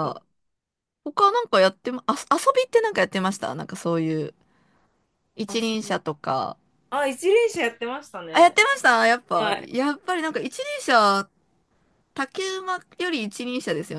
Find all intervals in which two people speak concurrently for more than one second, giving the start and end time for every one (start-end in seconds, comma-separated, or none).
none